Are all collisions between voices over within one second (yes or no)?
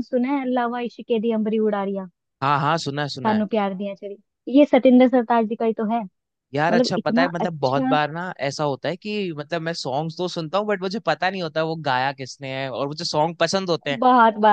no